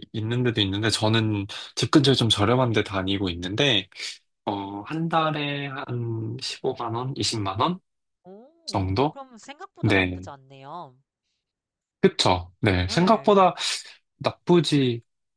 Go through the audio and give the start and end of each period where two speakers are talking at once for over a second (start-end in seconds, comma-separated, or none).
none